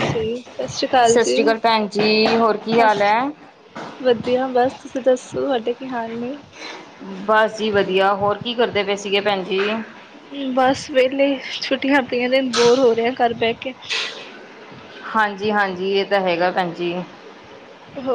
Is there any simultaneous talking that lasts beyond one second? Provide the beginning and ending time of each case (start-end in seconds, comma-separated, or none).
none